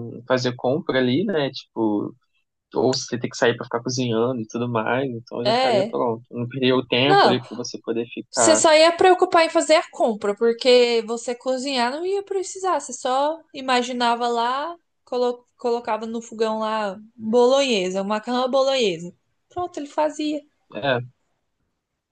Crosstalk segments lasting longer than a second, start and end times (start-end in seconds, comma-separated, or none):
none